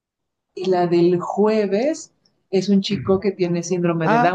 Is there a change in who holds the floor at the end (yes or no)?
yes